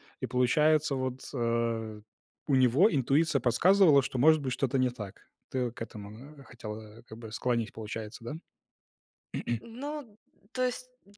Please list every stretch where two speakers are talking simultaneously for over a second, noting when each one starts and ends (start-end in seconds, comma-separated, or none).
none